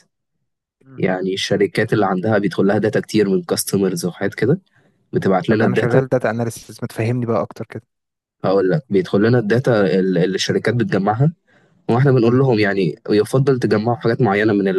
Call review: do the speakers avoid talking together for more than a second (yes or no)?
yes